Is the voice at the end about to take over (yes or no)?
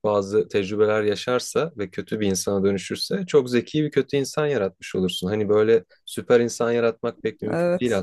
no